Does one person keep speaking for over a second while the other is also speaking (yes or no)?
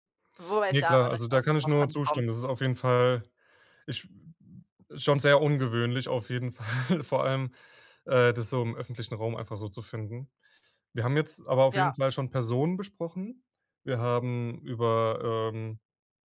yes